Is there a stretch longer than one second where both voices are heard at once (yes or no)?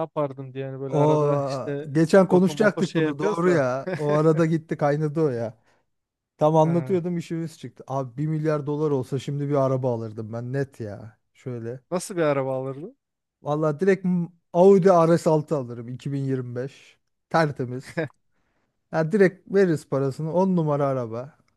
yes